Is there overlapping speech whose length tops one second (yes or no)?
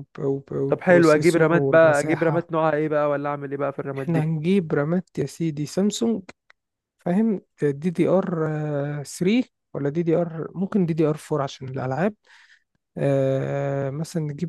yes